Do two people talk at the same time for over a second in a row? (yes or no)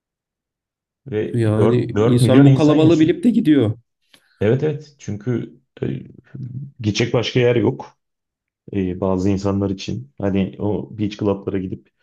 yes